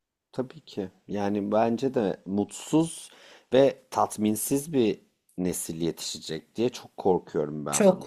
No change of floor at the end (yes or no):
no